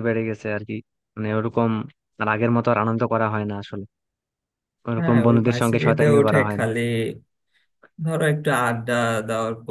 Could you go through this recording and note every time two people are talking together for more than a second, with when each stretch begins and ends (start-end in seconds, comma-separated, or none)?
5.0-6.7